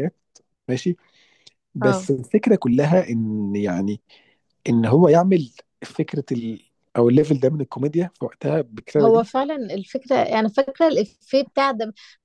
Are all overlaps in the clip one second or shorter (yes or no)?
yes